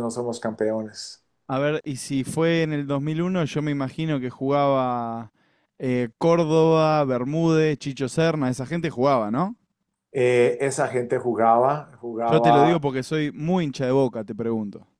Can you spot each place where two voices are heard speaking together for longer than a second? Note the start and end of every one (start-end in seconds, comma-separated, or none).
none